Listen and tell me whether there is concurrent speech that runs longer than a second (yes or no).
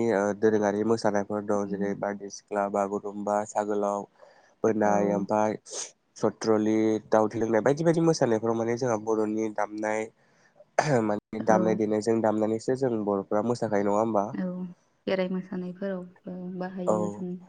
no